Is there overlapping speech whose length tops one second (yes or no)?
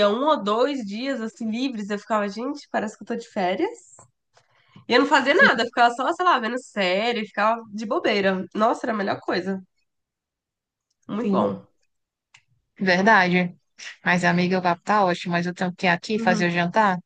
no